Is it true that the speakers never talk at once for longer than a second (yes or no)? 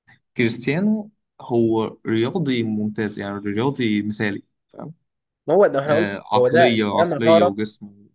no